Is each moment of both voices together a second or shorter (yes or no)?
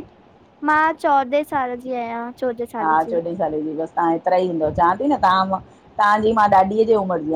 yes